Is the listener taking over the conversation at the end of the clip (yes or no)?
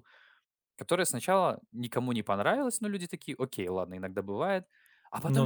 no